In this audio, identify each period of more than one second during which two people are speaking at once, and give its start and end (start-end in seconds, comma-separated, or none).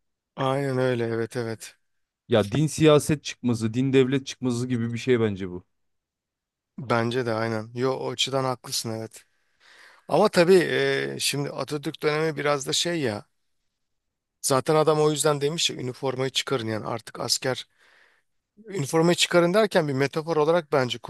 none